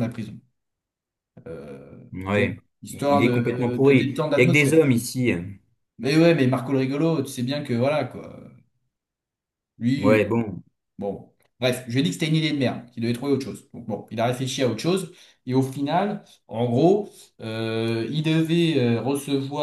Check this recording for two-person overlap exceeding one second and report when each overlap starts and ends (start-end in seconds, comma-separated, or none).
2.1-4.8